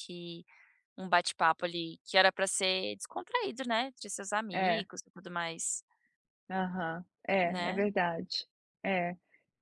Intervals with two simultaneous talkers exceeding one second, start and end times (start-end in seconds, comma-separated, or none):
none